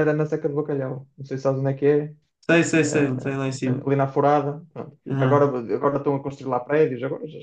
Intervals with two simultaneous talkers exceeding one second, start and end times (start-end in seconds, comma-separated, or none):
none